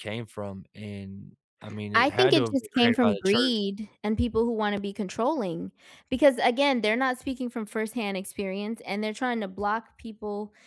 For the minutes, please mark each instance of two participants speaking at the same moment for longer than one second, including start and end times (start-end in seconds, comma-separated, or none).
1.9-3.6